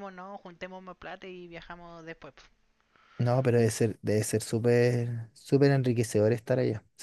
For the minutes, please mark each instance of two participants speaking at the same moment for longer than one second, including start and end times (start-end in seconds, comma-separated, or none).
none